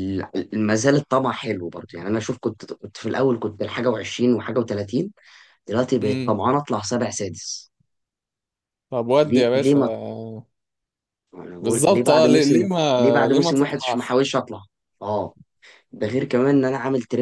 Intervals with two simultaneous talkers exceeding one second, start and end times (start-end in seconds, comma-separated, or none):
11.6-14.2